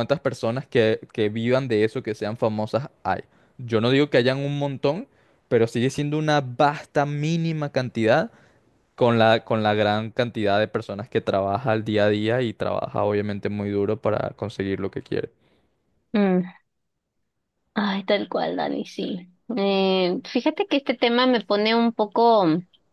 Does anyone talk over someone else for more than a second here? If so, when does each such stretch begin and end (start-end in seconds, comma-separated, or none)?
none